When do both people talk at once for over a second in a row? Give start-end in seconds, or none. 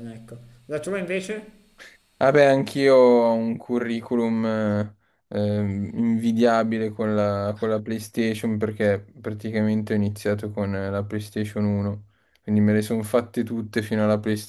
none